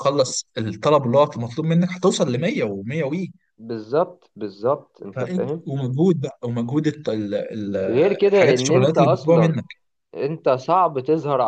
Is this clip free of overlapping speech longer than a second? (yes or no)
no